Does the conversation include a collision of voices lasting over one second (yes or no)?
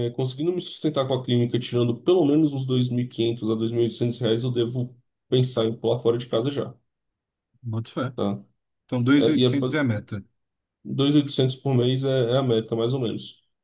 no